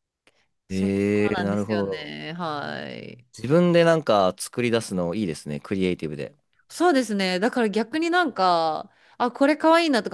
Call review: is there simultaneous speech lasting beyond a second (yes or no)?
yes